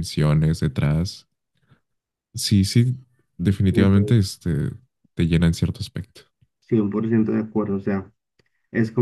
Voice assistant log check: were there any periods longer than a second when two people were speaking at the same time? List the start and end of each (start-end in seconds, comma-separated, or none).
none